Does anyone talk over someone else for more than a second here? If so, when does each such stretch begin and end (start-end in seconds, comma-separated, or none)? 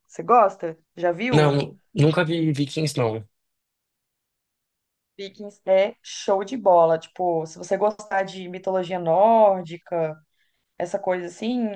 none